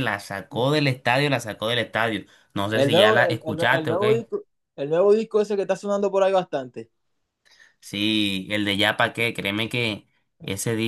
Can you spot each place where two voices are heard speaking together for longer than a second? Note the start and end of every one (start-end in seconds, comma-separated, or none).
2.7-4.2